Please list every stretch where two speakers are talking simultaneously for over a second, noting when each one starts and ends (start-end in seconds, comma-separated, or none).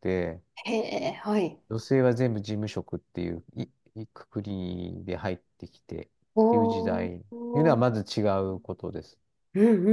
6.5-7.8